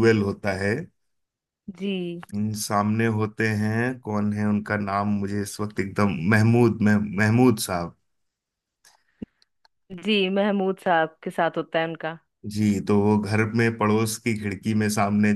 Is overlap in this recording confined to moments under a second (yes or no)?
yes